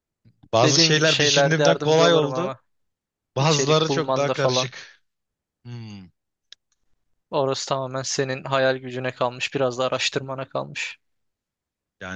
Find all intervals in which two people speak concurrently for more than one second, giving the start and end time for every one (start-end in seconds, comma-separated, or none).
0.6-2.5, 3.4-4.7